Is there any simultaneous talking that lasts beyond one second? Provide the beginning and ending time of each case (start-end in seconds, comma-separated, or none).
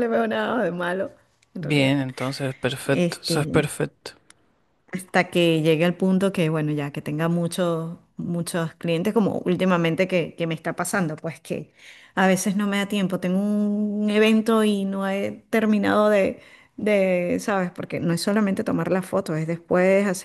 none